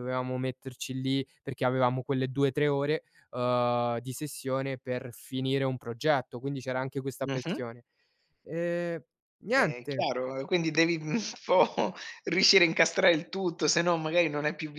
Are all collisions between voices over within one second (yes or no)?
yes